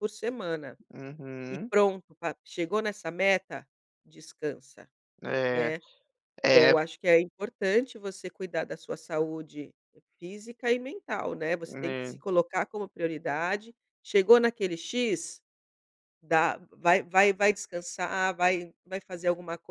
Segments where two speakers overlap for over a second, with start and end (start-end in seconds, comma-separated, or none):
none